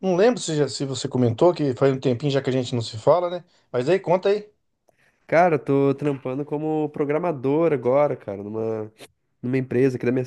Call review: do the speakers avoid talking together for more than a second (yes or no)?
yes